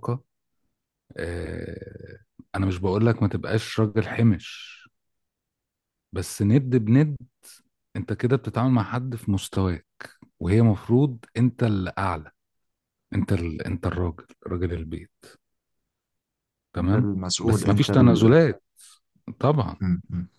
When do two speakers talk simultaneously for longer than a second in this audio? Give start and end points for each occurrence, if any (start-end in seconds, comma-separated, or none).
16.8-18.3